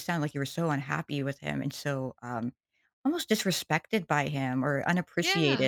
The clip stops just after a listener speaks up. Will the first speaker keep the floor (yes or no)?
yes